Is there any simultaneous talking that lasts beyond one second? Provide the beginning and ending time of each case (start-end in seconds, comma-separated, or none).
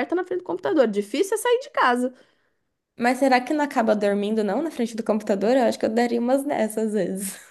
none